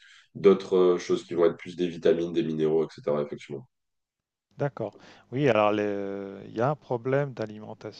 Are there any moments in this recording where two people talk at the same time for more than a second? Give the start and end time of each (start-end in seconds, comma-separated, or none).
none